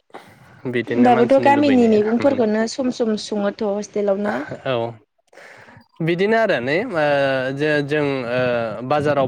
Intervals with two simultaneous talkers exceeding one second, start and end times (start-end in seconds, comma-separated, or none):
0.9-2.4